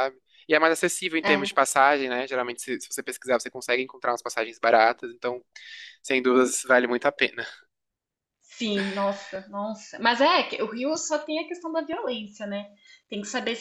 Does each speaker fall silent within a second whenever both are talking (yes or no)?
yes